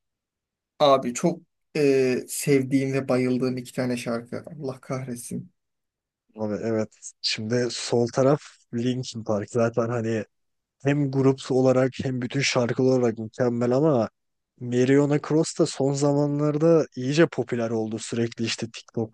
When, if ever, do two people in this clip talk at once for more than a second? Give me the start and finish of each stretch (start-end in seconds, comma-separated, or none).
none